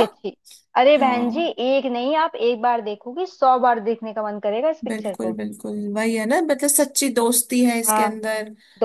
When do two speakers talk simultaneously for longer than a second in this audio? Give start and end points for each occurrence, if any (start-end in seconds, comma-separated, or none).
none